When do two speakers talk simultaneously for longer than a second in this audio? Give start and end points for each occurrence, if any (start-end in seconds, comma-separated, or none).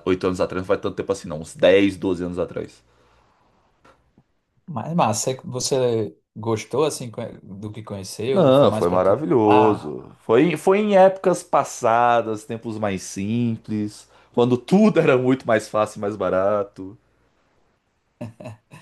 8.3-9.9